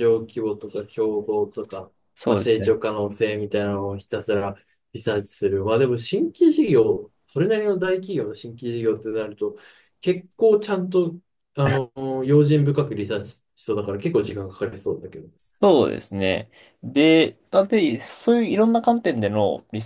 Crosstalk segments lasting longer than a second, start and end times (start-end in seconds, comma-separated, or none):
none